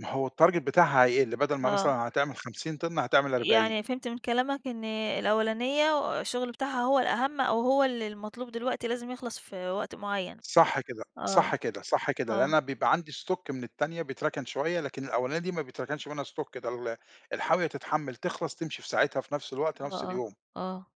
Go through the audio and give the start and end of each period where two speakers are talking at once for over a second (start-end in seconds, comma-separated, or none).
none